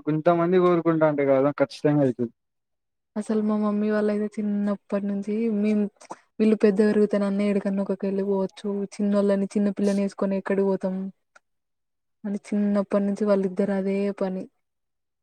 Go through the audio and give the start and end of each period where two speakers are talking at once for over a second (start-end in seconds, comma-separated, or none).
none